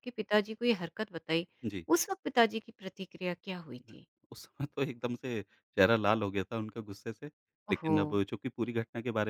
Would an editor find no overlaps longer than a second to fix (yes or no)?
yes